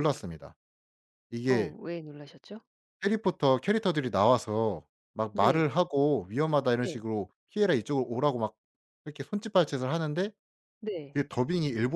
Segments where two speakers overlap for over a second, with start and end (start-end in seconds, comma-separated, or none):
none